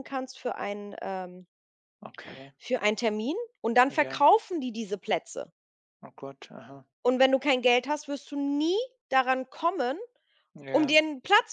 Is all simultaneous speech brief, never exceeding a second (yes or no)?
yes